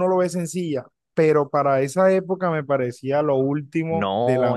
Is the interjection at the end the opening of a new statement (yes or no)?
yes